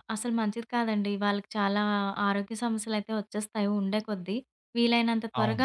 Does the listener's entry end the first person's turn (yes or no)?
no